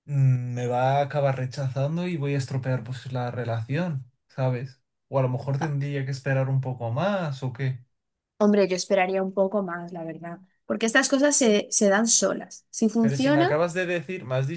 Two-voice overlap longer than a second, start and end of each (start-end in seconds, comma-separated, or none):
none